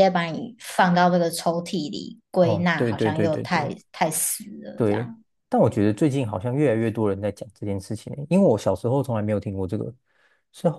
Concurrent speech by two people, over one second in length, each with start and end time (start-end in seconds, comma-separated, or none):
2.4-3.7